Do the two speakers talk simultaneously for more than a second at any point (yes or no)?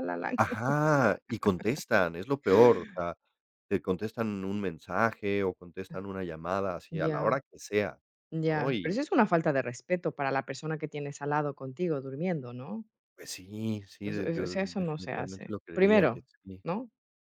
yes